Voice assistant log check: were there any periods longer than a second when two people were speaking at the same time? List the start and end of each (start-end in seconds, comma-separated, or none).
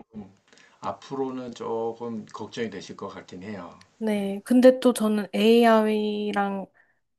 none